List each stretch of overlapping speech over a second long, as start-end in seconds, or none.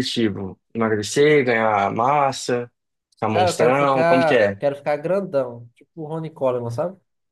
3.3-4.6